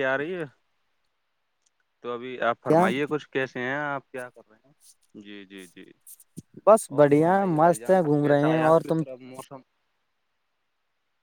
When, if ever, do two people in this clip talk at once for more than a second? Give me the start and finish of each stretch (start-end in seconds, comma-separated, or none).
7.0-9.0